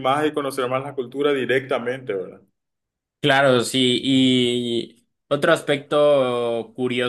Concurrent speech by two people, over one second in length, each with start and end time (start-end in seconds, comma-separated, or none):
none